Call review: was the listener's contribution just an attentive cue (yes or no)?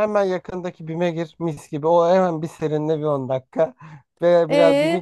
no